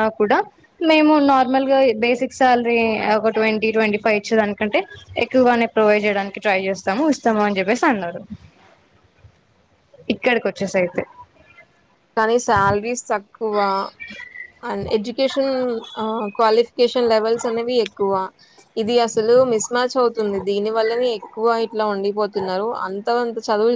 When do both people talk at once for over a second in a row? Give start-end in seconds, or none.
none